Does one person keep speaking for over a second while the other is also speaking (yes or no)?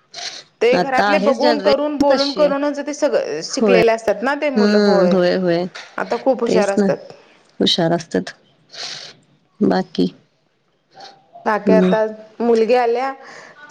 yes